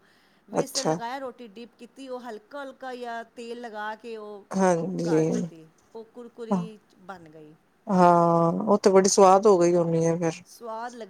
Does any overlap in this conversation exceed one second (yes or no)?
no